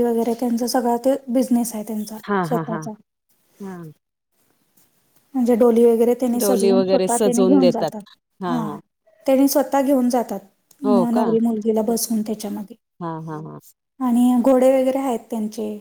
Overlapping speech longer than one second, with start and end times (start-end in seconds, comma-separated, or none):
6.4-7.9